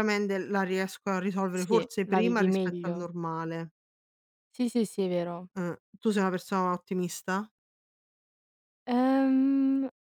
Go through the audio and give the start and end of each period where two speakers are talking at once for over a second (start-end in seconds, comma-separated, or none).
1.5-3.1